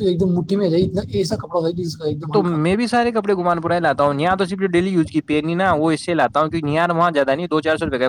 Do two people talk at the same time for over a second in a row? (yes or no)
no